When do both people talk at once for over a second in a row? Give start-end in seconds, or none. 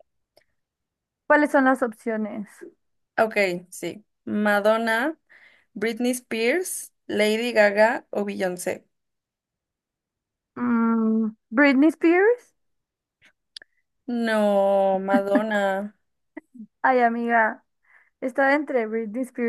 none